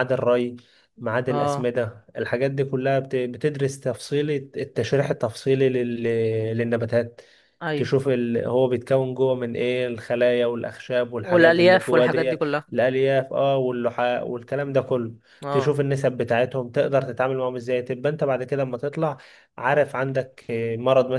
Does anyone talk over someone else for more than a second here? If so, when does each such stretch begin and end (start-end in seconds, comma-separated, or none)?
11.2-12.7